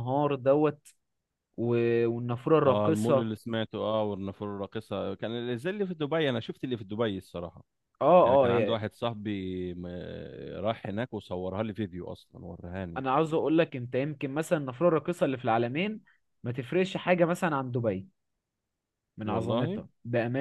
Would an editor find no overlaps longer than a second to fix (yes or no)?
yes